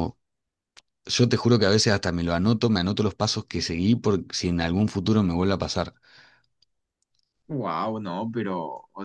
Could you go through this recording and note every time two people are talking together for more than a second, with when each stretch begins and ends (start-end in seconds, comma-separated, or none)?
none